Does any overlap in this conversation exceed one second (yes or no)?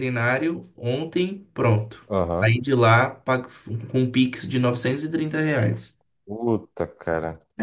no